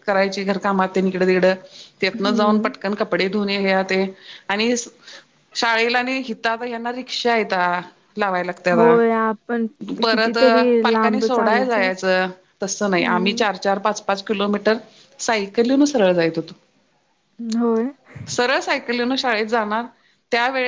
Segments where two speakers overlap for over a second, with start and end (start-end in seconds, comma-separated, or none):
10.1-11.9